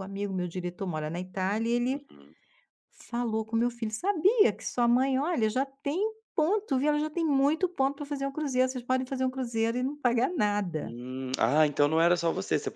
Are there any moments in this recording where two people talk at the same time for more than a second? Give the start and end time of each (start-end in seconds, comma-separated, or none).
none